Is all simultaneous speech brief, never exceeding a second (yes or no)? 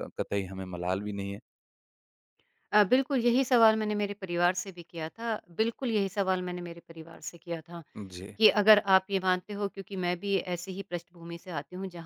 yes